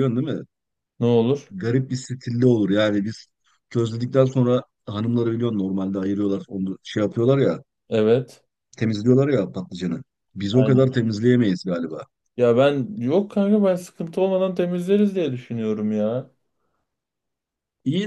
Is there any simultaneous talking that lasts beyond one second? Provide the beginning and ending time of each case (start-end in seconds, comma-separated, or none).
none